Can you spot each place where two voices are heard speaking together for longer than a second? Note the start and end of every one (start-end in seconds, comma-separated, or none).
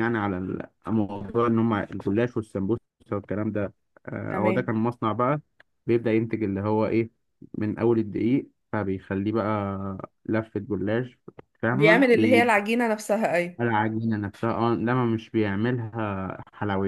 none